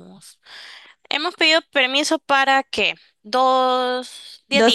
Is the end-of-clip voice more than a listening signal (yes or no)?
yes